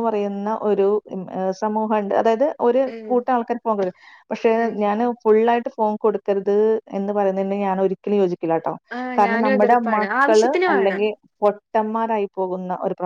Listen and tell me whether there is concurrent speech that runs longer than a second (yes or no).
yes